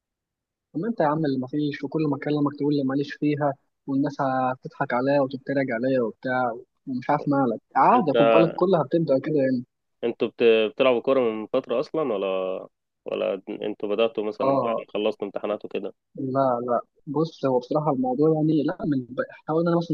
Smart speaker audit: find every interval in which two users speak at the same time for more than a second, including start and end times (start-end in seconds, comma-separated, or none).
none